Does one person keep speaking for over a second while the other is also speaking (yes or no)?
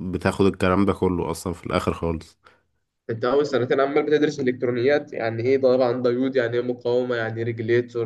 no